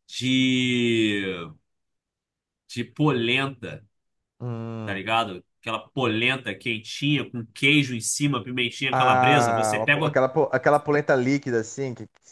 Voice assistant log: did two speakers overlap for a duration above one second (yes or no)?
yes